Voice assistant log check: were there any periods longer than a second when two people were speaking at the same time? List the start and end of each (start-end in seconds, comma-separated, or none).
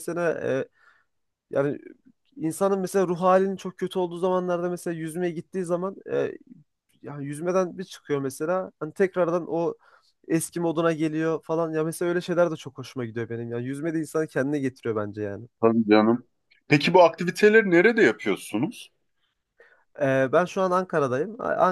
none